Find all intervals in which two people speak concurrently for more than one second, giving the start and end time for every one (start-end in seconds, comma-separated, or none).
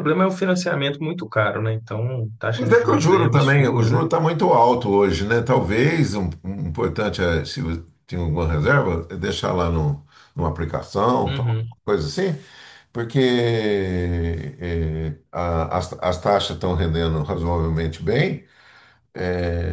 2.5-4.0